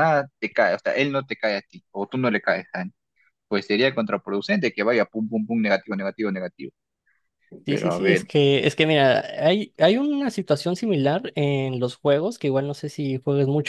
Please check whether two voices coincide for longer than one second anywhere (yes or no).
no